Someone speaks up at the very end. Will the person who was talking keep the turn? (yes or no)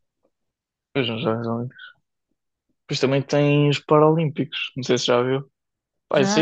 yes